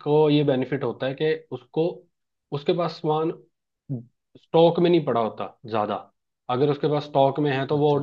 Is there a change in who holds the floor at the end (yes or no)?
no